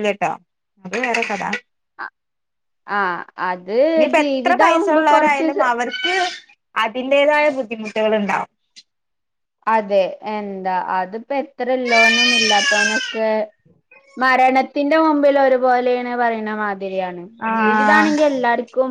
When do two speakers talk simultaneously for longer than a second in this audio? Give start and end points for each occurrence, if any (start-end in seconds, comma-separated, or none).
4.2-5.5